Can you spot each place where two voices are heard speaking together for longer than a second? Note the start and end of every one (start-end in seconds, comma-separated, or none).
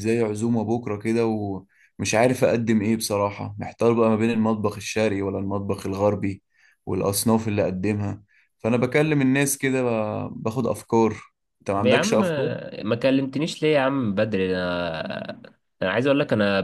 none